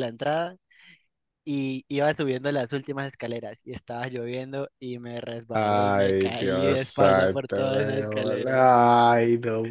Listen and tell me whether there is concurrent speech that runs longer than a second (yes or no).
yes